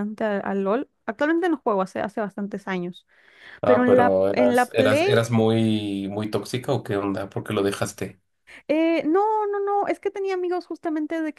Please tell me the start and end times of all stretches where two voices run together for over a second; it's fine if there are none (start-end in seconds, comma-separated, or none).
3.6-5.1